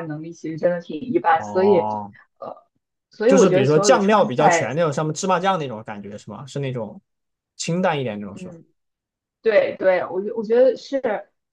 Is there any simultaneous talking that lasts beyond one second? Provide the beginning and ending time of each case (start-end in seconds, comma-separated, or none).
3.2-4.7